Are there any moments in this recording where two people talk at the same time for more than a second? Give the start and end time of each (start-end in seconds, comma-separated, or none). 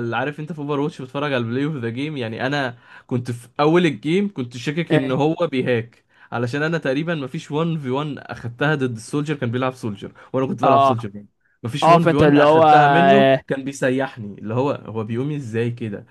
11.8-13.4